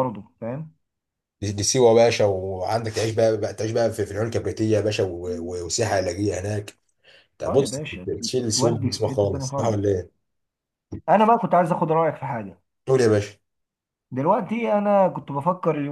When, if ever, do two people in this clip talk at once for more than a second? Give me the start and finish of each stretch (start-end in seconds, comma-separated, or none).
8.6-9.8